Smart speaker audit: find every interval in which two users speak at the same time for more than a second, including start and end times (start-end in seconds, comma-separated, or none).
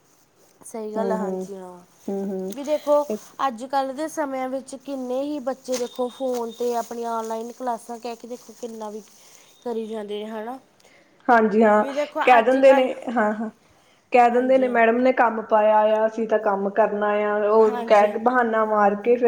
none